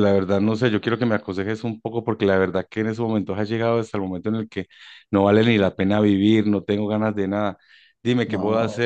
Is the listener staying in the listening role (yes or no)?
yes